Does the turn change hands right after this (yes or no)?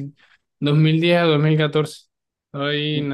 no